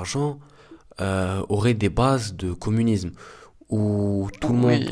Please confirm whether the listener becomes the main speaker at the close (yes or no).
no